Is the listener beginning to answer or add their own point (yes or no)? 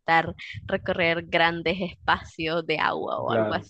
no